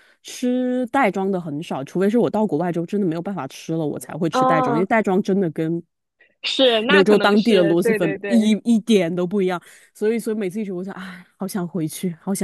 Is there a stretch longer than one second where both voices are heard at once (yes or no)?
yes